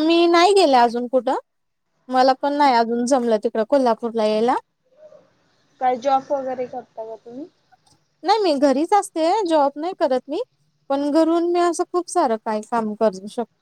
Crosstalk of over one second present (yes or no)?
no